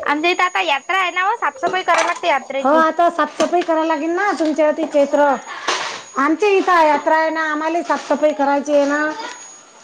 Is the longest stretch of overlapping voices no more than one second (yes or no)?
yes